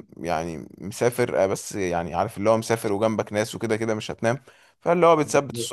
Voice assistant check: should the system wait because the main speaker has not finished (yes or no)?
yes